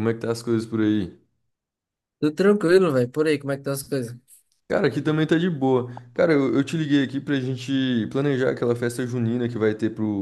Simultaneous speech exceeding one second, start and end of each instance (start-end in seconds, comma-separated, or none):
none